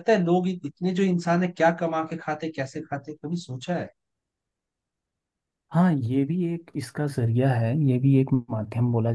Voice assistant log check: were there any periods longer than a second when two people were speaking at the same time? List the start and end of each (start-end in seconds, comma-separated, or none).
none